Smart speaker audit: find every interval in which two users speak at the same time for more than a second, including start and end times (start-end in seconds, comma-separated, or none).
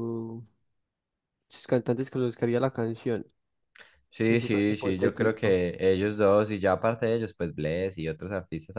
4.3-5.6